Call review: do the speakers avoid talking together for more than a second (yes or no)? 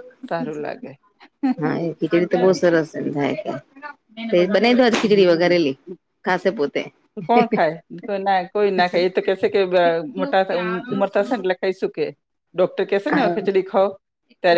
yes